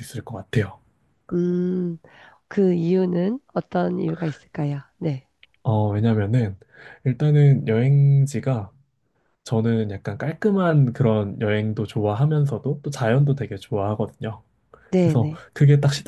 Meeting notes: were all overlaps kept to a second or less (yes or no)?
yes